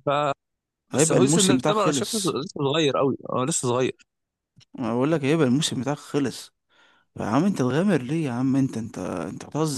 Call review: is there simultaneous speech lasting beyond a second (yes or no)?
yes